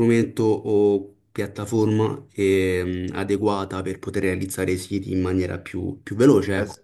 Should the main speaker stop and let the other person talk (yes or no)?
yes